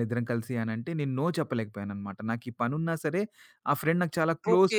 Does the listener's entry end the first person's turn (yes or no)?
yes